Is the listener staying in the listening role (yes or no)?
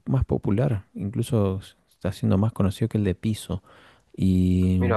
yes